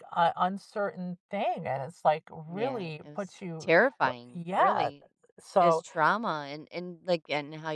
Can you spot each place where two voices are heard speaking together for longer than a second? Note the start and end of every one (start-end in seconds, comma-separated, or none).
2.5-4.9